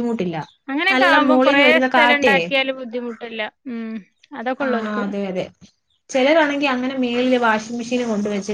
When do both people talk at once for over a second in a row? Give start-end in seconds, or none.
none